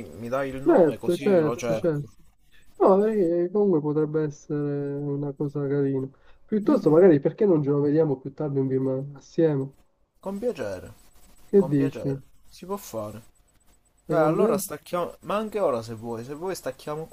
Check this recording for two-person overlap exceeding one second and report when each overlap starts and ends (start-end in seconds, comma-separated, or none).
0.6-2.1